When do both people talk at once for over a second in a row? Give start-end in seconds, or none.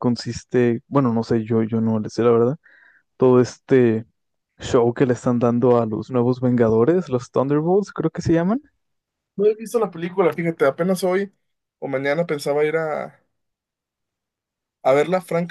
none